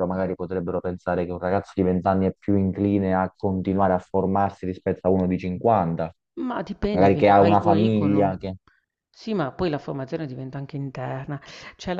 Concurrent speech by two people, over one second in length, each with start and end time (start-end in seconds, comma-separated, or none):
6.9-8.4